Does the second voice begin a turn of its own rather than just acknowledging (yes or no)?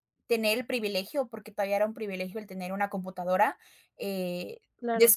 no